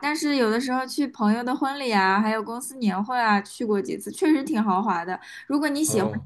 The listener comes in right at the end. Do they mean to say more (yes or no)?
no